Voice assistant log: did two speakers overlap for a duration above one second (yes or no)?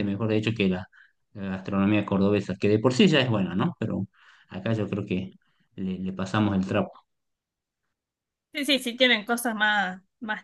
no